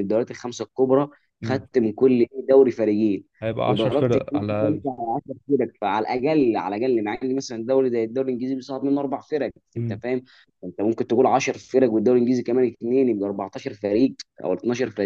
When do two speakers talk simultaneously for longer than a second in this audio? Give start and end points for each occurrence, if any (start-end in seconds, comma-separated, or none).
3.6-4.8